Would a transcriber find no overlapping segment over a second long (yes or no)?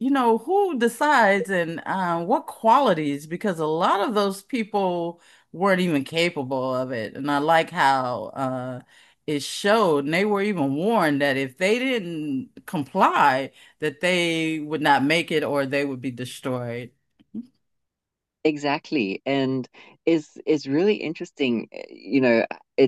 yes